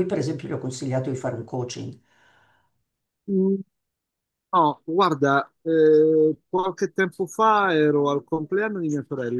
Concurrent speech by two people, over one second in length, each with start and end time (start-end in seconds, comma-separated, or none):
none